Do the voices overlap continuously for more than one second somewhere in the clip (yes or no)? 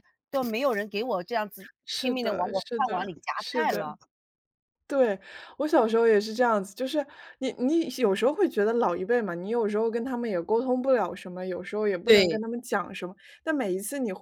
yes